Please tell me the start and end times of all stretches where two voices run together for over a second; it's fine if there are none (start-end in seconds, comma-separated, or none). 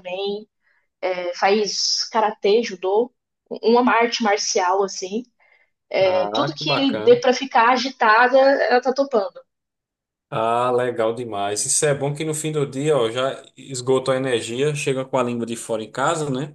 6.0-7.2